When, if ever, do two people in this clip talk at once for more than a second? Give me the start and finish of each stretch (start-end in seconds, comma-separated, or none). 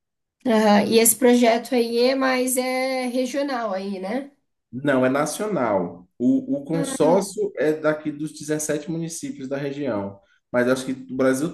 none